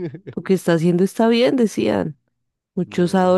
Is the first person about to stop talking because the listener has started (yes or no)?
no